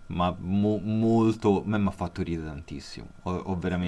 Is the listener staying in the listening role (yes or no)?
yes